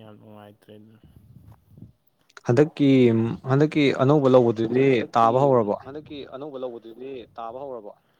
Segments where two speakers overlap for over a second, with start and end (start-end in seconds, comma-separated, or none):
none